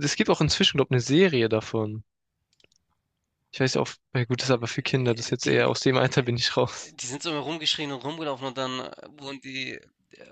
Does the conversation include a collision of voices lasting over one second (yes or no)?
yes